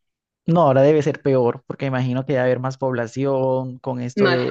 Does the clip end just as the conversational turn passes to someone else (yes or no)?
no